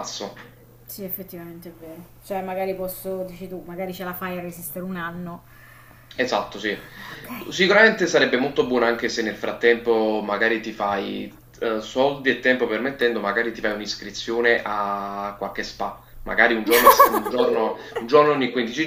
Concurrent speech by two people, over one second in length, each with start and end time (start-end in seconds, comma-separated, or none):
none